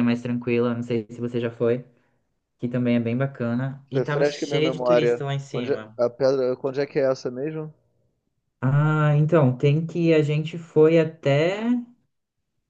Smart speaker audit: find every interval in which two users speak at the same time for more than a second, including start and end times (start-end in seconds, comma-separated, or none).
4.0-6.0